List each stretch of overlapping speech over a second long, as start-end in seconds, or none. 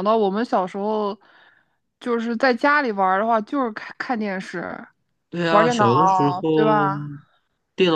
none